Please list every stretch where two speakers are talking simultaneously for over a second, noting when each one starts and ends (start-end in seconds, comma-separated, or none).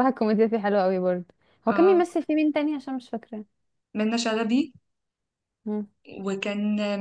none